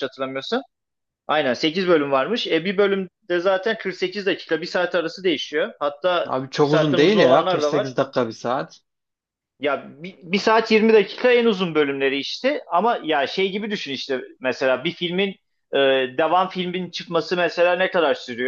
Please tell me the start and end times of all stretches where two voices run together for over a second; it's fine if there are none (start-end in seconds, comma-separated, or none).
6.3-8.0